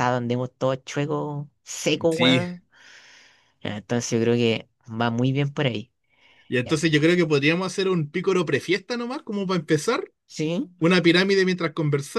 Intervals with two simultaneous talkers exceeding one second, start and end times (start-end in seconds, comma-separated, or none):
none